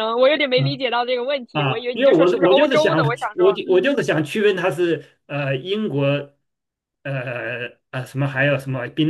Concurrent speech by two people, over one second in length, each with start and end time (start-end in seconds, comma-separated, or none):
1.5-4.0